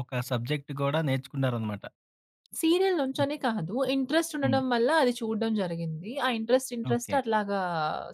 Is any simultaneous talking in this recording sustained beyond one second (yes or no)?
no